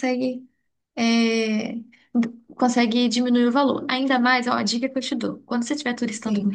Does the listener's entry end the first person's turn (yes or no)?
no